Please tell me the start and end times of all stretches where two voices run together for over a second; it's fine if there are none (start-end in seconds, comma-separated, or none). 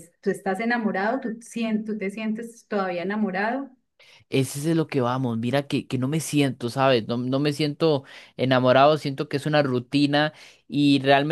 none